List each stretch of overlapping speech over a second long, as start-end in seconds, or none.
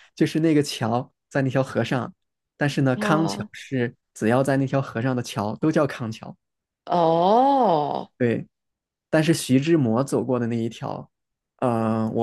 none